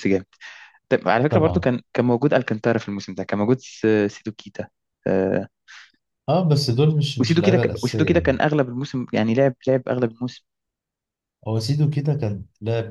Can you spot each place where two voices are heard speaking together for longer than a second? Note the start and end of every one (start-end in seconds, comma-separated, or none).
7.2-8.4